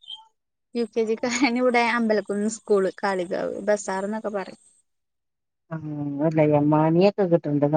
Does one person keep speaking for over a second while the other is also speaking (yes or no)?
no